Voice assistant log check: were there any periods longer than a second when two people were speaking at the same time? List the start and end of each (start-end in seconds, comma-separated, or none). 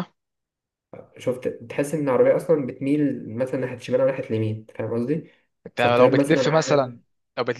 5.8-7.0